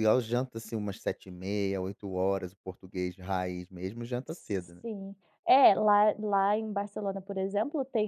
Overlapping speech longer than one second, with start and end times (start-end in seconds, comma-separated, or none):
none